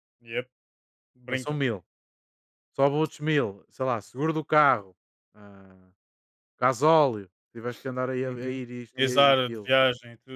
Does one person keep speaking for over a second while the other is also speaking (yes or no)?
yes